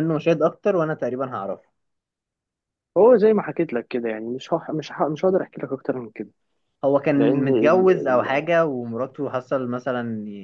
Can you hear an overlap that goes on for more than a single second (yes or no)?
yes